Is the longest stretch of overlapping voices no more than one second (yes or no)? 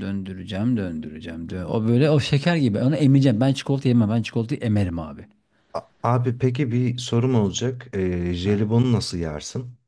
yes